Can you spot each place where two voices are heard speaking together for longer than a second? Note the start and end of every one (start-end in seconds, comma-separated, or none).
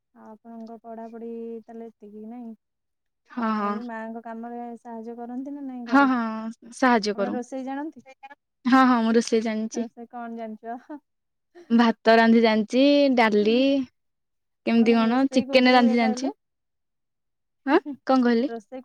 14.7-16.3